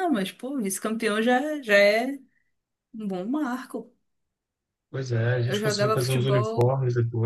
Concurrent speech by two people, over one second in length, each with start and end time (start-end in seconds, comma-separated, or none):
5.5-6.7